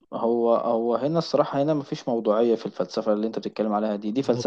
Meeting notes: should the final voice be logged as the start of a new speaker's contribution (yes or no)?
no